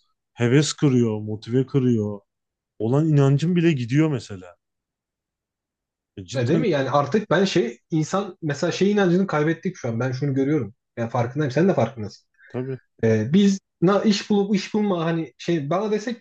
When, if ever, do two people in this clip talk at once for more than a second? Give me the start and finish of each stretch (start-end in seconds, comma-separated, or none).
none